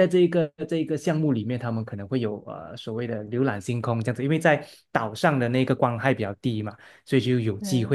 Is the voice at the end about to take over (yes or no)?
no